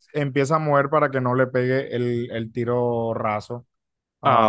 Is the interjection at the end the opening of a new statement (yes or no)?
yes